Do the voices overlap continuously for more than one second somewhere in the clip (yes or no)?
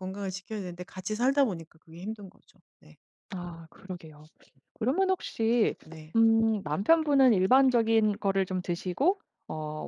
no